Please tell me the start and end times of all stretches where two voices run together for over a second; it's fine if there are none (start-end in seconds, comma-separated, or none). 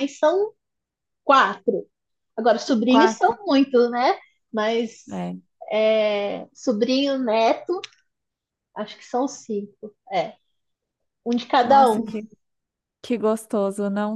none